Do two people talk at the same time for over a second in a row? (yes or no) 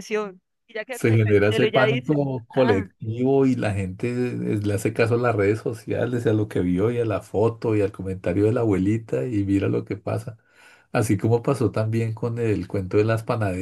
yes